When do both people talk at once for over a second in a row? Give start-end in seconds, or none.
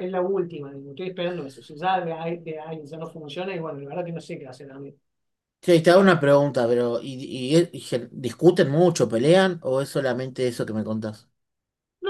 none